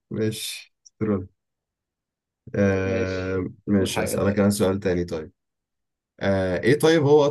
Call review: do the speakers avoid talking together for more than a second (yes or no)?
no